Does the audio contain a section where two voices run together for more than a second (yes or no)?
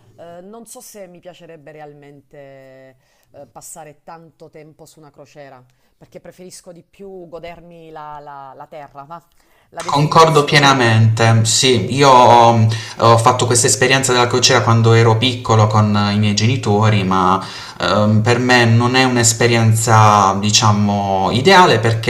yes